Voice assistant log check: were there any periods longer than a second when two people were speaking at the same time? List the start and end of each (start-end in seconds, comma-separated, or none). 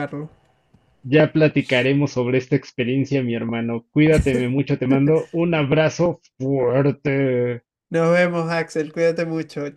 none